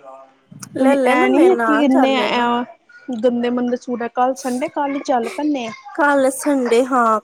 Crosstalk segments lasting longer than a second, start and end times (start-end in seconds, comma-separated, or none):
0.8-2.4